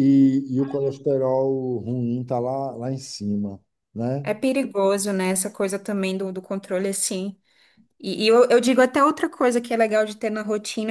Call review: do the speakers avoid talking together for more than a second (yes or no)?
yes